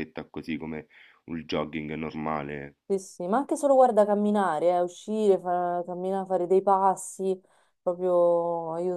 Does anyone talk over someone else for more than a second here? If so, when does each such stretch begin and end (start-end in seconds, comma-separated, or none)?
none